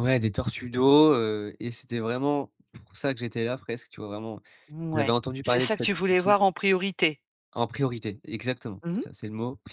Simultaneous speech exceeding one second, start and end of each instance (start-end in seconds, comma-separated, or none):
4.9-6.4